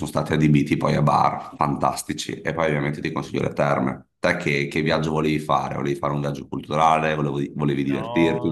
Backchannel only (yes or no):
no